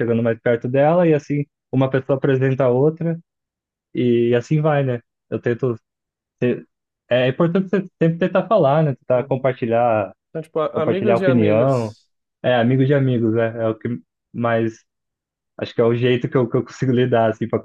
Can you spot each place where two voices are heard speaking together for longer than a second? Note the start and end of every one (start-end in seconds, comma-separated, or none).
10.7-11.9